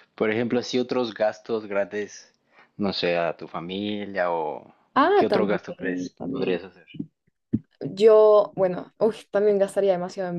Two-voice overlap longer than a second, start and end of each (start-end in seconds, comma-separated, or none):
5.1-6.6